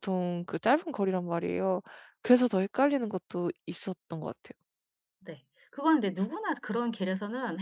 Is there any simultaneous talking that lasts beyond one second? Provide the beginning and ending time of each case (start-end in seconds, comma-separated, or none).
none